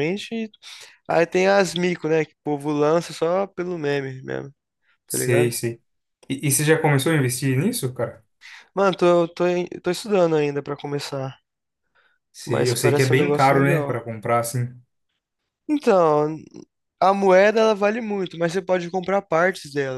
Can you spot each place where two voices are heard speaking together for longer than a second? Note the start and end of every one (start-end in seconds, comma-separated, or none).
12.4-14.0